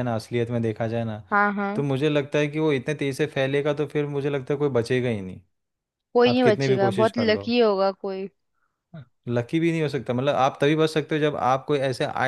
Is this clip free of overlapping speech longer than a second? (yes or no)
no